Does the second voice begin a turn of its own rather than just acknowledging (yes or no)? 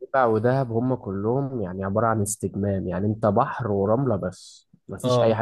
no